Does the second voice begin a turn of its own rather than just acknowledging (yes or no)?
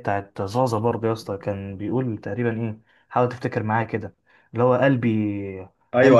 yes